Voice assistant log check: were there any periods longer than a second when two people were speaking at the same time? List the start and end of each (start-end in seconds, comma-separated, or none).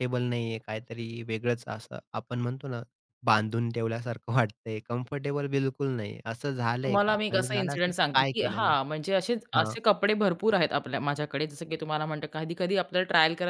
6.8-8.7